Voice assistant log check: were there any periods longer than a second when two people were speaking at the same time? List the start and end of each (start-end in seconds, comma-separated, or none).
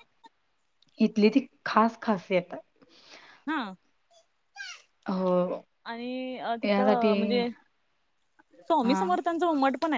none